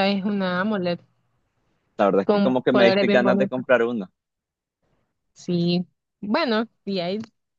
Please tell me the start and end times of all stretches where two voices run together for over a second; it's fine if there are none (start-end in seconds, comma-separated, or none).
2.2-3.6